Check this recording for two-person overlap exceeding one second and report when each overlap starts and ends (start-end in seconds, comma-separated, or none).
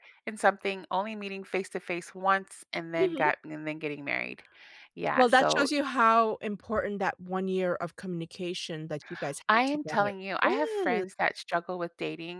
9.5-11.0